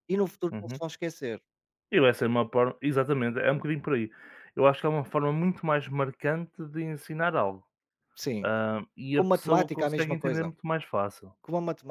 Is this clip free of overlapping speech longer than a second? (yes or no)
no